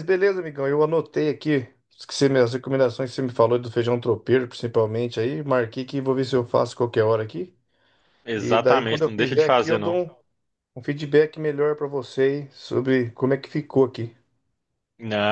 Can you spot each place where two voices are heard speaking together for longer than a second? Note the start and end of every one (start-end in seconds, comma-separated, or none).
8.3-9.9